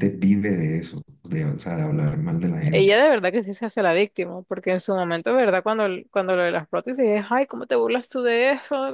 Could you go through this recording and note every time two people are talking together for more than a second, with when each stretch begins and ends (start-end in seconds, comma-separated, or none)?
none